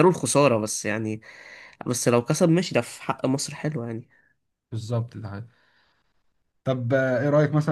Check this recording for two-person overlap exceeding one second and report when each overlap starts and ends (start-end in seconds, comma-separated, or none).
none